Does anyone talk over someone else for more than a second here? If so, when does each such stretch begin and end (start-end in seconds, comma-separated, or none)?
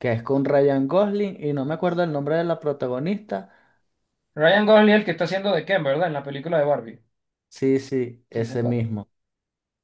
none